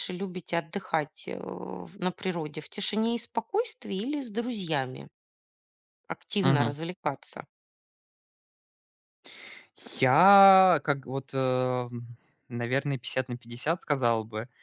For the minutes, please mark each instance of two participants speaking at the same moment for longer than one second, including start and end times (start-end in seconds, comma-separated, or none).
none